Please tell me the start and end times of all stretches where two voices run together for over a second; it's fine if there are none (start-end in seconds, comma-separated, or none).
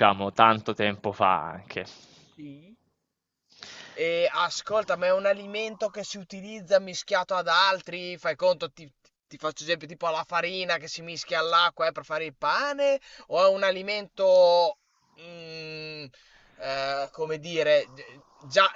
none